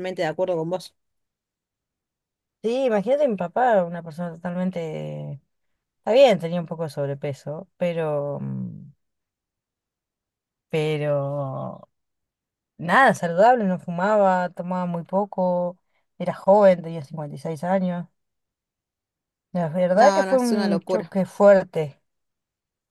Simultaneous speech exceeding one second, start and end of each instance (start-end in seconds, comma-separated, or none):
19.9-21.1